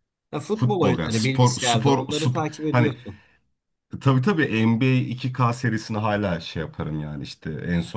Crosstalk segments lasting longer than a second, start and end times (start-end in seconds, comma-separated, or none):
0.5-2.9